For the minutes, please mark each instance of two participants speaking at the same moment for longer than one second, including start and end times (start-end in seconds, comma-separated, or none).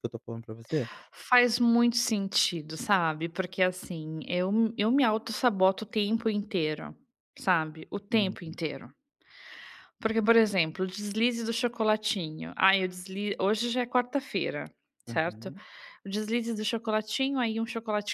none